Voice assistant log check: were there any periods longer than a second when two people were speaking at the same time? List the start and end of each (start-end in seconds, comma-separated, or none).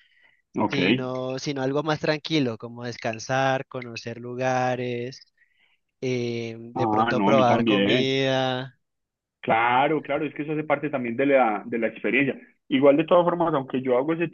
6.7-8.1